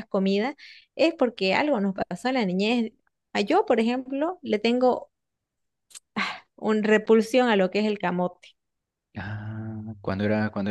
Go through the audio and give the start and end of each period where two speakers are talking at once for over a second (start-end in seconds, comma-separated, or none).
none